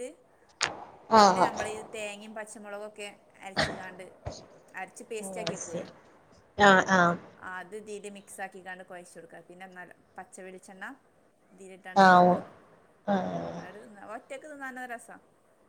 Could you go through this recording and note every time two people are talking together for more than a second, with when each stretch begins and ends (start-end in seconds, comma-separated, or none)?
none